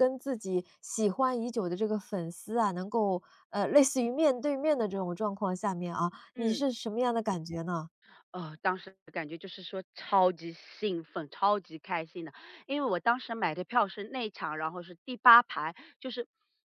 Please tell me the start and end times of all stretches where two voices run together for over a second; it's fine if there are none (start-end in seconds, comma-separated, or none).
none